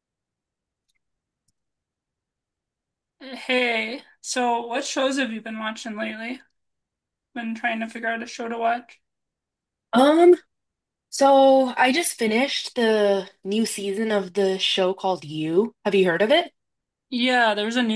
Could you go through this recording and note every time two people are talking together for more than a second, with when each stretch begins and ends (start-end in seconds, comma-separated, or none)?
none